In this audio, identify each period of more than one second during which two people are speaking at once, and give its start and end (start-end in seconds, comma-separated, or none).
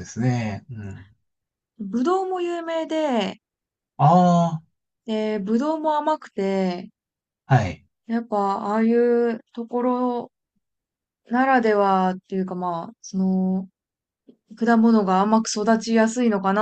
none